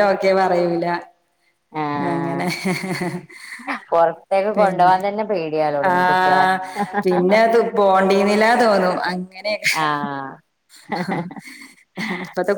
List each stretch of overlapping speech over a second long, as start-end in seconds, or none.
none